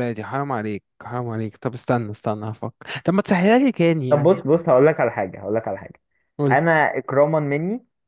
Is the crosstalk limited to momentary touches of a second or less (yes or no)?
yes